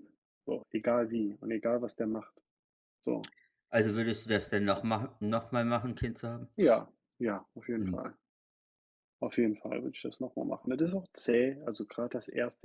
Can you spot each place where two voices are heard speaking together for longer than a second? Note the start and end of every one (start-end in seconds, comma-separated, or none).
none